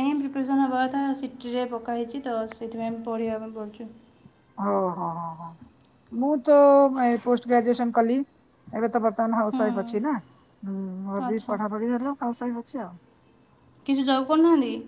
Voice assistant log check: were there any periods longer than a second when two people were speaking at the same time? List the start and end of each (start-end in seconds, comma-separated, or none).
none